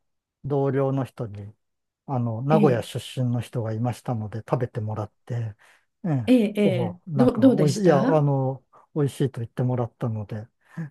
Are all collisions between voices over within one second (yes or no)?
no